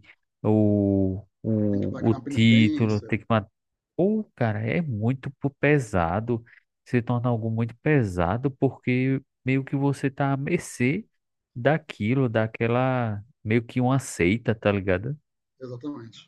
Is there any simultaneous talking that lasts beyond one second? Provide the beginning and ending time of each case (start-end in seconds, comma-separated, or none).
1.7-3.1